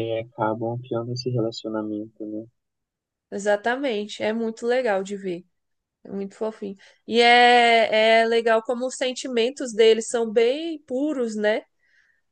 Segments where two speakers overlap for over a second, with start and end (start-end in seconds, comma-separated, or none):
none